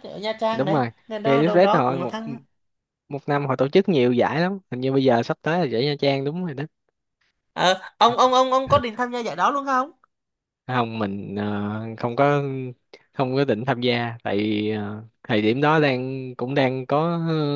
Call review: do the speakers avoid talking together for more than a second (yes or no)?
no